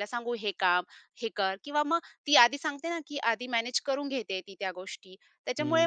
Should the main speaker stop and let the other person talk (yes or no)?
yes